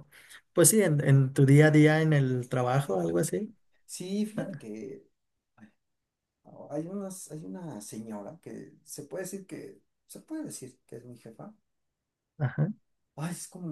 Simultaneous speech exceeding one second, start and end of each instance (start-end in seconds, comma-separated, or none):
none